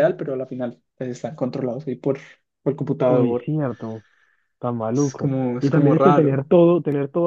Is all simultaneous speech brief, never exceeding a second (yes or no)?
no